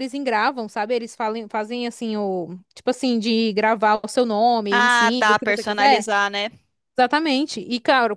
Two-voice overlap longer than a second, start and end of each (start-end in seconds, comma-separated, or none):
4.7-6.0